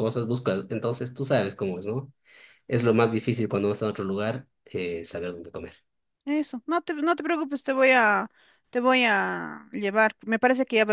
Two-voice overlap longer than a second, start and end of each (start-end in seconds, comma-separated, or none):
none